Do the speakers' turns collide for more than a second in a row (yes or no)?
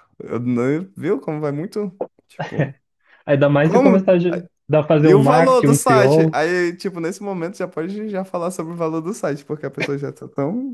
yes